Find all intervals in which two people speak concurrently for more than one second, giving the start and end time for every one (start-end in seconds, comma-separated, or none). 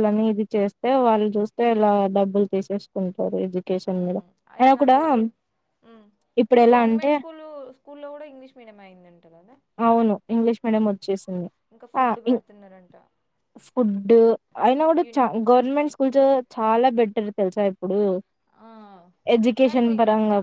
none